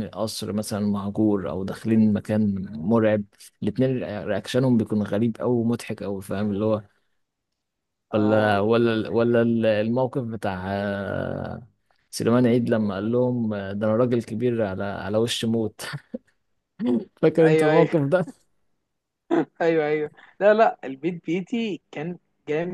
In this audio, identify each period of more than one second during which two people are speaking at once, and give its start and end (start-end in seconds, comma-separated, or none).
none